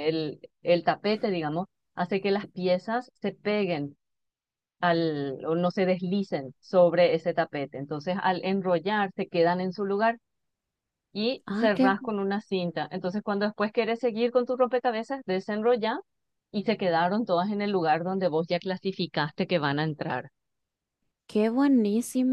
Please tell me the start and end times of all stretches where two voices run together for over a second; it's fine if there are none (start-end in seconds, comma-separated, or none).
none